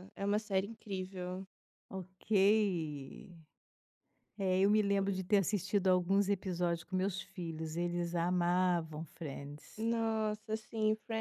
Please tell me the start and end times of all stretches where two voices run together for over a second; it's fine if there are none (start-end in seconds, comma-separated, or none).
none